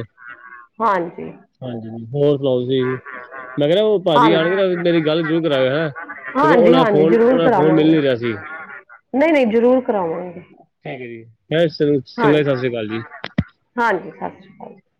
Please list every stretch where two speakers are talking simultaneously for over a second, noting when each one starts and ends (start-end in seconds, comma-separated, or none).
6.4-8.0